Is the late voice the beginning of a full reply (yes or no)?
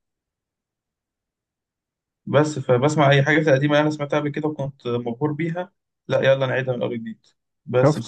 yes